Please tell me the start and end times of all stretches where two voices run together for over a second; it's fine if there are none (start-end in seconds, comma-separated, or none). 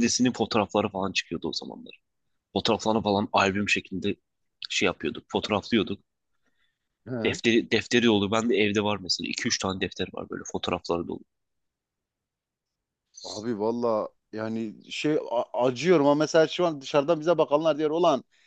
none